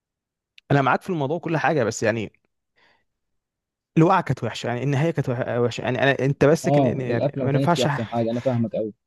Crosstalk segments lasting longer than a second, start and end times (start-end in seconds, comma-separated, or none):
6.7-7.9